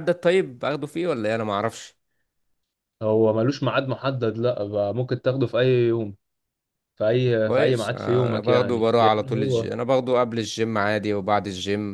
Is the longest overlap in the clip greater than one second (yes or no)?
yes